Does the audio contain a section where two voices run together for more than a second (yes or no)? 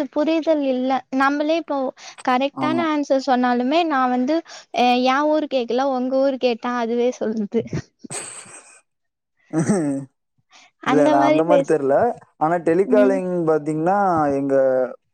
no